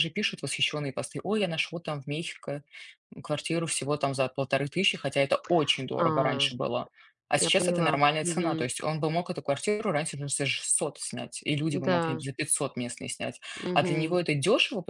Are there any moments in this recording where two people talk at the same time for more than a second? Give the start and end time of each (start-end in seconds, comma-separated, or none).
7.4-8.7